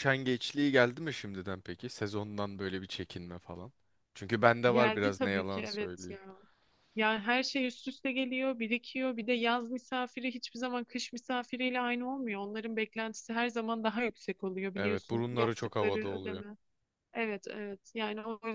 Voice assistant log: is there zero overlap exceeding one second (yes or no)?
no